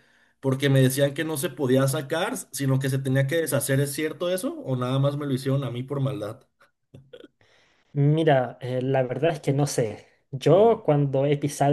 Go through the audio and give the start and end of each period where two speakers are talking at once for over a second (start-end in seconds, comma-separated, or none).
none